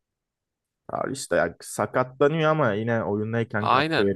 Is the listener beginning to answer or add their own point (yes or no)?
yes